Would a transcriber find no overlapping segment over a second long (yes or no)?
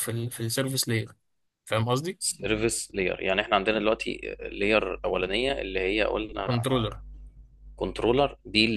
yes